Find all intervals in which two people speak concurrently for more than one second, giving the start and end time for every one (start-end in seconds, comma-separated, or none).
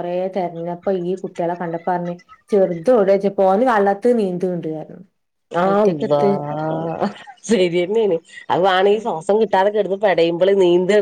none